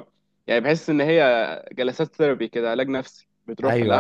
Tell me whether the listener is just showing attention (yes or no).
yes